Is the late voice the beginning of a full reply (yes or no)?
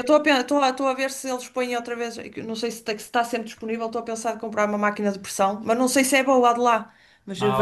yes